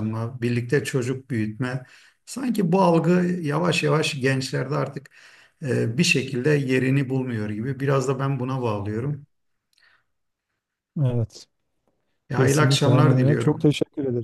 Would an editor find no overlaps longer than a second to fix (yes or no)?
no